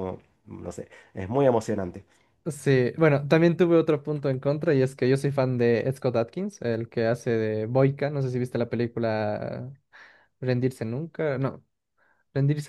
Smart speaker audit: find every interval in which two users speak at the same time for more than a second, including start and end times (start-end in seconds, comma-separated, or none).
none